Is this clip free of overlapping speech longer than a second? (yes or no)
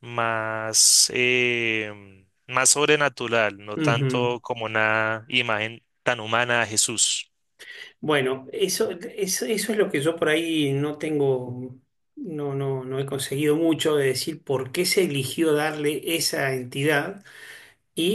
yes